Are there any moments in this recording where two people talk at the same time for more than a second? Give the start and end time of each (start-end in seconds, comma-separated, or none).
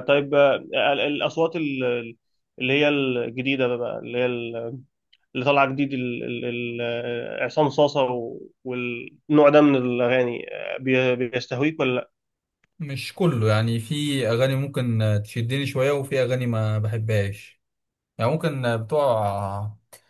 none